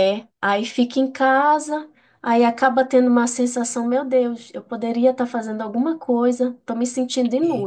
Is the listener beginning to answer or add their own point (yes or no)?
no